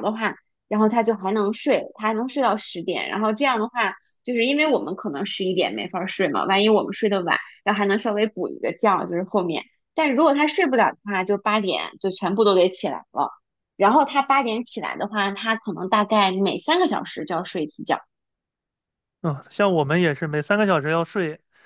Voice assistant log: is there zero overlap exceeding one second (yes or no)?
yes